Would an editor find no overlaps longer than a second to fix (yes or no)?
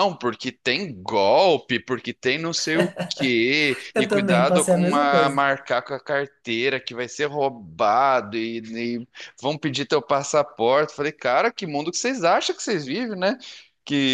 no